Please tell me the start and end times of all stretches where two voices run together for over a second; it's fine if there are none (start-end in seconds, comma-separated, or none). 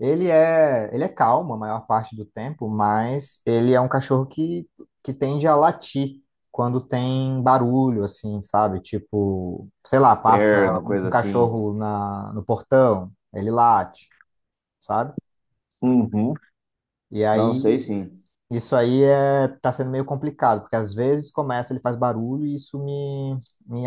10.2-11.6